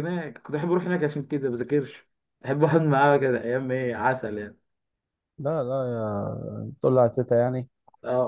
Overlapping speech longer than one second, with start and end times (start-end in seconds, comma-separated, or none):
none